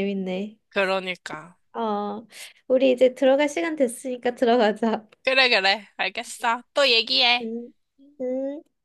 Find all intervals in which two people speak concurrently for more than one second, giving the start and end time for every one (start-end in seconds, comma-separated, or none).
none